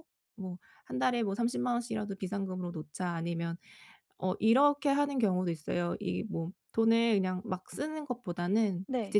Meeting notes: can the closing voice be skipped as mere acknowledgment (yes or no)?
yes